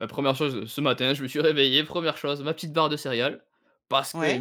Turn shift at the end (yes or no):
no